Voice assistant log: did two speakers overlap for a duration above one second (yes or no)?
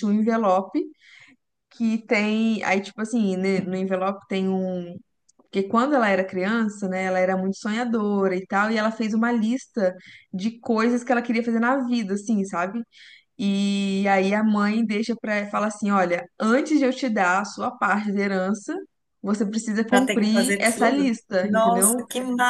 yes